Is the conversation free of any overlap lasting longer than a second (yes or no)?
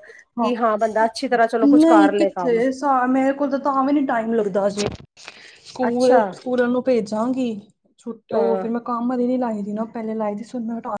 yes